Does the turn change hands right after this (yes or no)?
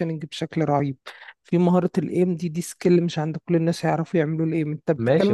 yes